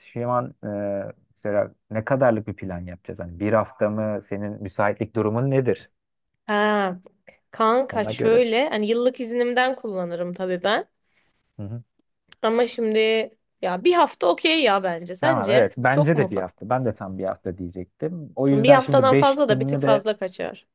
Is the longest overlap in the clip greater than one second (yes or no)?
yes